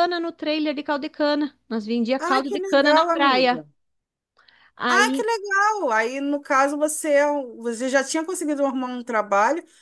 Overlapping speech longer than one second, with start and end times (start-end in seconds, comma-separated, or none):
2.2-3.6